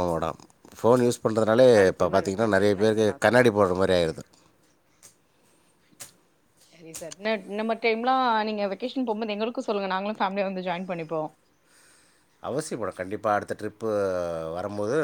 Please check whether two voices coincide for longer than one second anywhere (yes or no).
yes